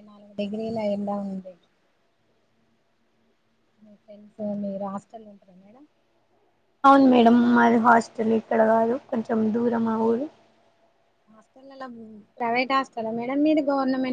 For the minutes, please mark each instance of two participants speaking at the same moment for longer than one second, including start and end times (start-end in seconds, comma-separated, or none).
none